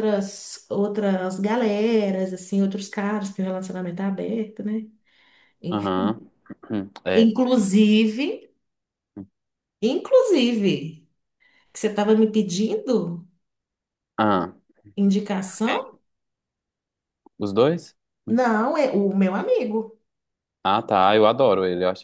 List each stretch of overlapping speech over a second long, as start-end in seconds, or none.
none